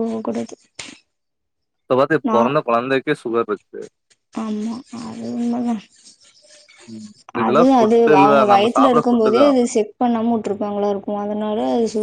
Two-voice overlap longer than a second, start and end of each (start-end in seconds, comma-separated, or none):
7.5-9.5